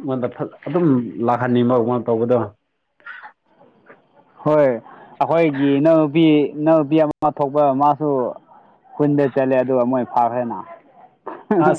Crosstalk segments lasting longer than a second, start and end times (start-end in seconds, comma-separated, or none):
none